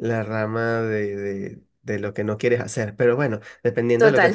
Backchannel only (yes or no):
yes